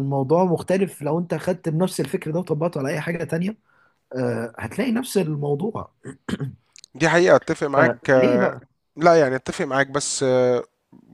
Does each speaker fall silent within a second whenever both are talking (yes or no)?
yes